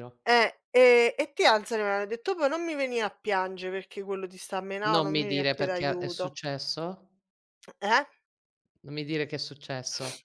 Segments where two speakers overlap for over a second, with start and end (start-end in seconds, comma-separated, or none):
4.9-6.4